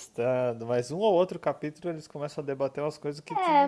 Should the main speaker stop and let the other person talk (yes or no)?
yes